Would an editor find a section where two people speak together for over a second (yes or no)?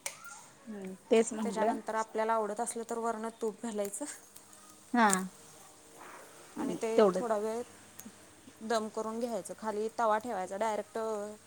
no